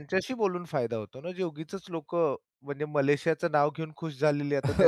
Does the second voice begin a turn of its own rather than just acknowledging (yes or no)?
yes